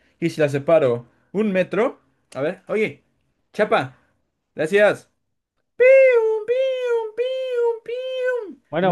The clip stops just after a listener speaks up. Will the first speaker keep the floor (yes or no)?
no